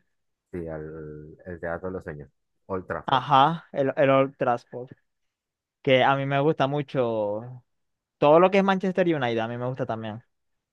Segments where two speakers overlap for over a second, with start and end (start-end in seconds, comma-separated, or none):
none